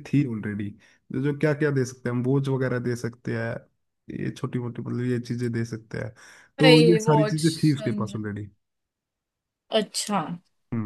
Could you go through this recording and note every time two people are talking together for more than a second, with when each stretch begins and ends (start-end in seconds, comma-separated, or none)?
6.6-8.2